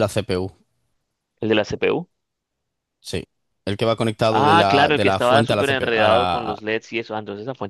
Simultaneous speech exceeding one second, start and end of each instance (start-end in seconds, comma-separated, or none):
4.3-6.6